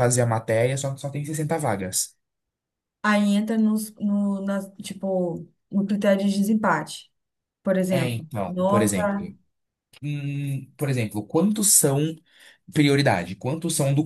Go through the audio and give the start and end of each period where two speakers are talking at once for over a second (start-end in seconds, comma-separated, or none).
7.9-9.3